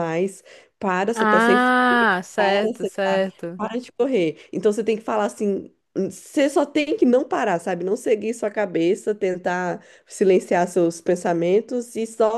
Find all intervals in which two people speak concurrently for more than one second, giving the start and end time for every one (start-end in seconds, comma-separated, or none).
1.1-2.6